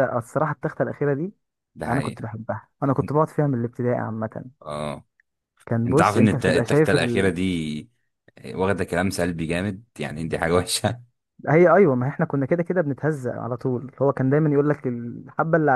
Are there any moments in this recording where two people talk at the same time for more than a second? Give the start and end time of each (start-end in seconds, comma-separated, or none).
5.9-7.4